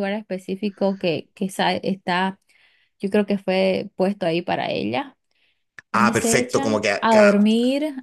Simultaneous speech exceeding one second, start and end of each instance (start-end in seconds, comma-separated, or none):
5.9-7.5